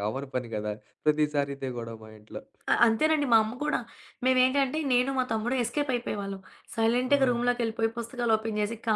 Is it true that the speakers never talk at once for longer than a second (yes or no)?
yes